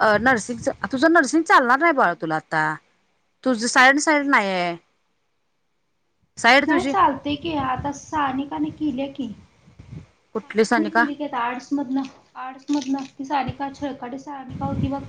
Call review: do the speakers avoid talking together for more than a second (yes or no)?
no